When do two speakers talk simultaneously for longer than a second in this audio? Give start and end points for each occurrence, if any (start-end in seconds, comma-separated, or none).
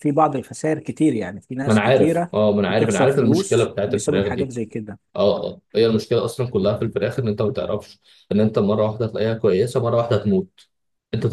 1.7-4.5